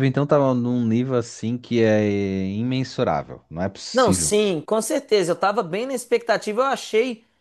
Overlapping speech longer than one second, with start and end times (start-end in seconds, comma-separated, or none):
none